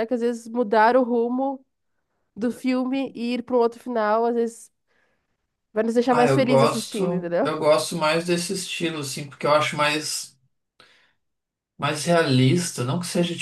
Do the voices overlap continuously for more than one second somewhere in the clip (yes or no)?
yes